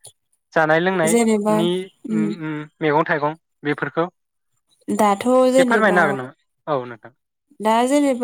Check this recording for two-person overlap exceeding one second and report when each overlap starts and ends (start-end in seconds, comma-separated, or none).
none